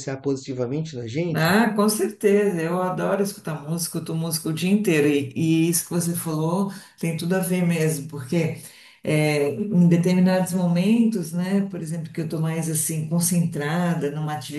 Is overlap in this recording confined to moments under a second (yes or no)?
yes